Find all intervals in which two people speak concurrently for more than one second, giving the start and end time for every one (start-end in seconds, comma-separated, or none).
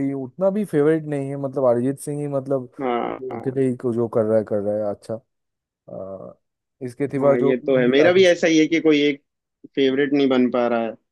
7.2-8.4